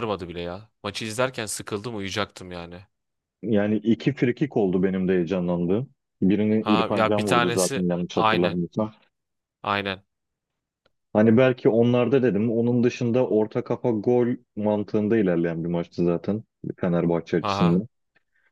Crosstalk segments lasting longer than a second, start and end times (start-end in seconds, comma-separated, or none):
6.6-8.6